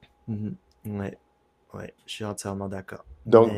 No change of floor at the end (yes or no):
no